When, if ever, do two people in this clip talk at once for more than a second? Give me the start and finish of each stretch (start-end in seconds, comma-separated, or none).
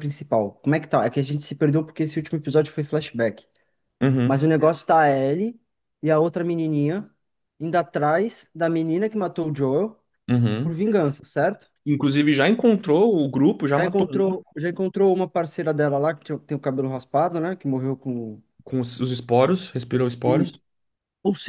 none